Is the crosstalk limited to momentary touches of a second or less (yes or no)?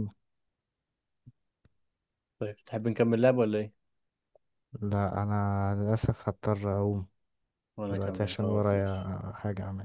no